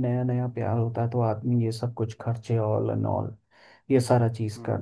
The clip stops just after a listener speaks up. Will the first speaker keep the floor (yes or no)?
no